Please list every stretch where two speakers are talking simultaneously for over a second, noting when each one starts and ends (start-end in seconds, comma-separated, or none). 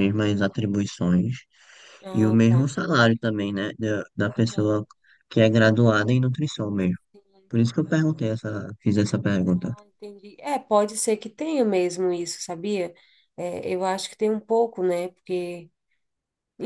none